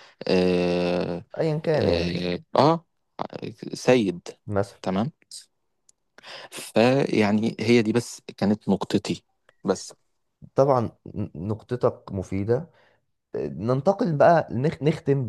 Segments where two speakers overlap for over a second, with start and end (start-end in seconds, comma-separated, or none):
none